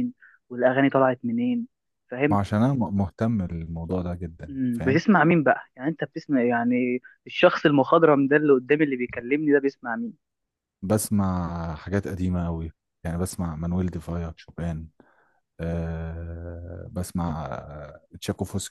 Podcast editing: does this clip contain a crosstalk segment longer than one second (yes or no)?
no